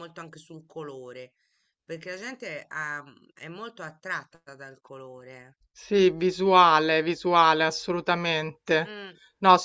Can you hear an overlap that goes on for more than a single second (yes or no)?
no